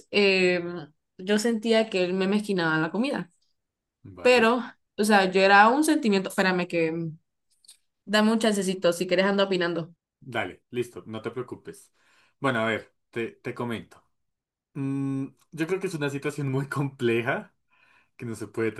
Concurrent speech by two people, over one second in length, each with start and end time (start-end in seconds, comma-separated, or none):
none